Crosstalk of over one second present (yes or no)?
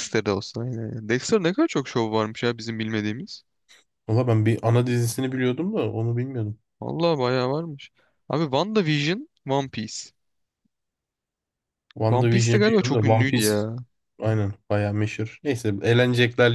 yes